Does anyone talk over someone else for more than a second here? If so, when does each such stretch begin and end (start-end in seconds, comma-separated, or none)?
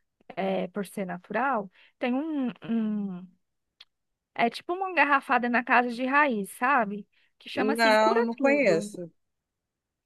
7.5-9.0